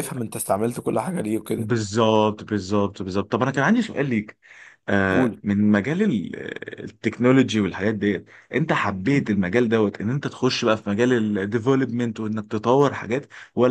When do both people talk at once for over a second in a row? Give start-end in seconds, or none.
none